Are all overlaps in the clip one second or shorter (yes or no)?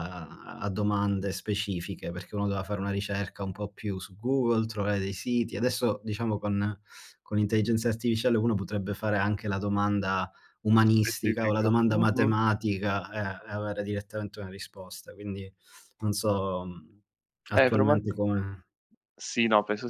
no